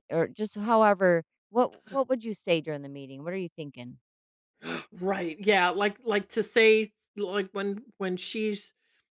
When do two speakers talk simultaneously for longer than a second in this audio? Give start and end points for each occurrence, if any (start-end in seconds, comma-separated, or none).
none